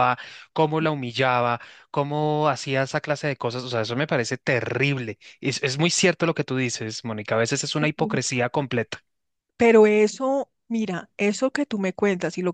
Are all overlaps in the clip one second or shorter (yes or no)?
yes